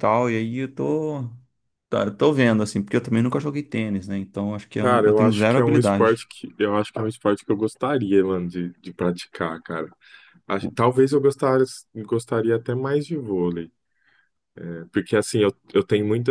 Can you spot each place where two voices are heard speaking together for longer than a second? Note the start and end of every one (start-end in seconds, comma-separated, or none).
4.8-6.3